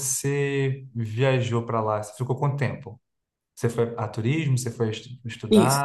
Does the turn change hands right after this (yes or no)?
yes